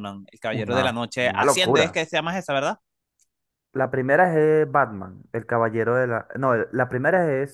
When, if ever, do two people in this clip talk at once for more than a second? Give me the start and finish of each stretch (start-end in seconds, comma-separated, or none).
0.5-2.0